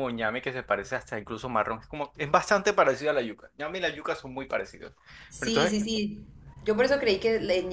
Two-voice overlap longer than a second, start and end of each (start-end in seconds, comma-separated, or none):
none